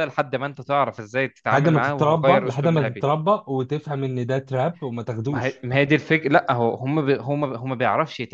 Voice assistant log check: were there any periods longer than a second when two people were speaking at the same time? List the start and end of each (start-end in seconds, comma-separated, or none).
1.5-3.1